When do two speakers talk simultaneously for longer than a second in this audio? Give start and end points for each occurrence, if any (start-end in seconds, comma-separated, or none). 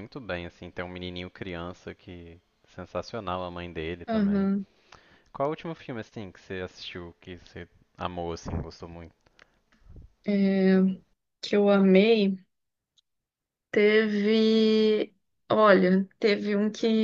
none